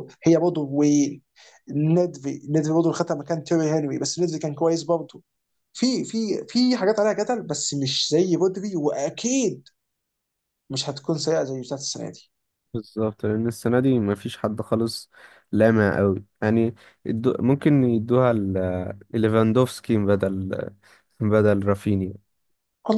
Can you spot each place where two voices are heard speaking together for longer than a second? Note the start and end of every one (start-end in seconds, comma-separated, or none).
none